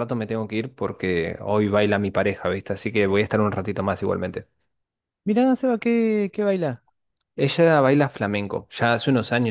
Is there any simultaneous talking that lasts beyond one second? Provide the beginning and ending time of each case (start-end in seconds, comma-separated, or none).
none